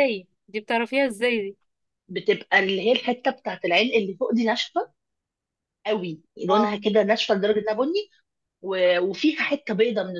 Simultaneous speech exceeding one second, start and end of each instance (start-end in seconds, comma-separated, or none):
none